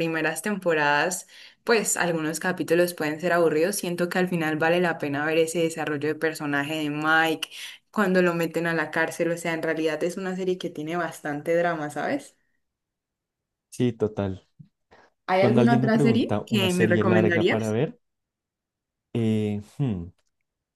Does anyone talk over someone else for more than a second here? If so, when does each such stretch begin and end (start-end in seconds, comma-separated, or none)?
15.4-17.8